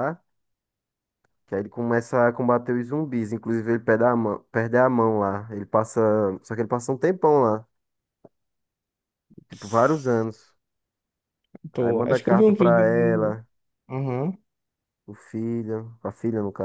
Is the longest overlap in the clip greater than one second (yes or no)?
yes